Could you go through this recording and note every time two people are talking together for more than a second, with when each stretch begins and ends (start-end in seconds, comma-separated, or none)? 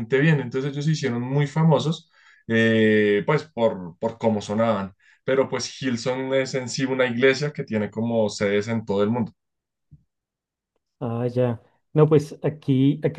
none